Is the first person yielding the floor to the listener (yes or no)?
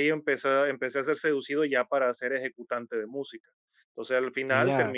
no